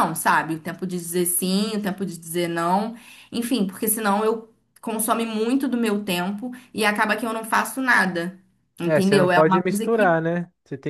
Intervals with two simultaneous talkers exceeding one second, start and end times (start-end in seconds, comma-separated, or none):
8.8-10.2